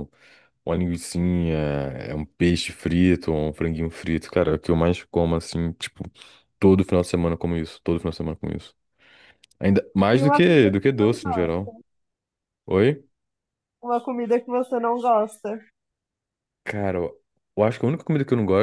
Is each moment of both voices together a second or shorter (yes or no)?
no